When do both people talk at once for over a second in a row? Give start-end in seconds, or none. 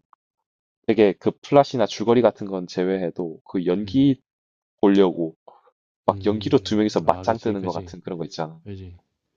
6.1-8.0